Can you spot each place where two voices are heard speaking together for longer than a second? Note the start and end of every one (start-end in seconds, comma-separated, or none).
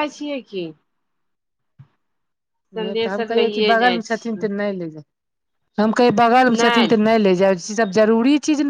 2.8-4.4